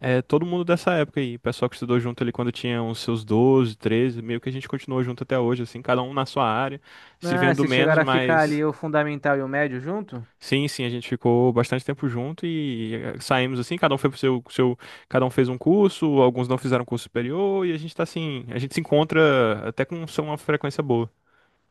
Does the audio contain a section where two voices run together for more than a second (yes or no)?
yes